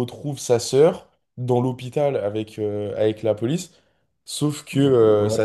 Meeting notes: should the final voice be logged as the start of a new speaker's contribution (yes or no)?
no